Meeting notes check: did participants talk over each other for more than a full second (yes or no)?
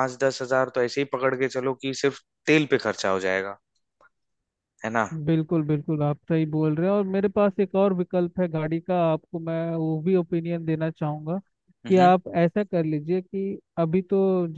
no